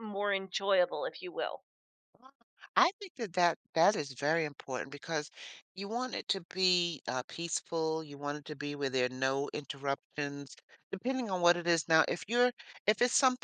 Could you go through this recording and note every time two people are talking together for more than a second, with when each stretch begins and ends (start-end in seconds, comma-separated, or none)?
none